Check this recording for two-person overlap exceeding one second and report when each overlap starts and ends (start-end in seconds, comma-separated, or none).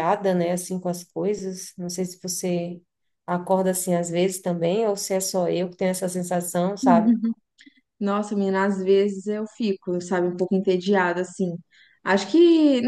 none